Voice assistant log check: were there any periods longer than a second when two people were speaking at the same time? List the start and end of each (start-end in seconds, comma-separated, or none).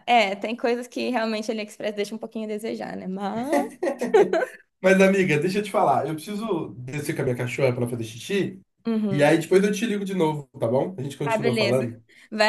none